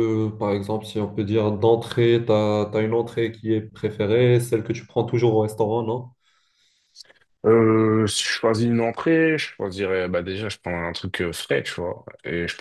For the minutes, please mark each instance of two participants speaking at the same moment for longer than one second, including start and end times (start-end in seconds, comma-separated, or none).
none